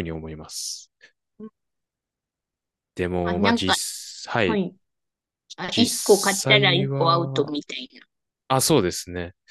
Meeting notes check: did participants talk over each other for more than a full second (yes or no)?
yes